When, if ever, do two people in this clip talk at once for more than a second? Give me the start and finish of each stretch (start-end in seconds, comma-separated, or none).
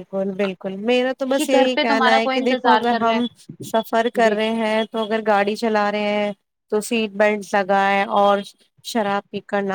1.4-3.1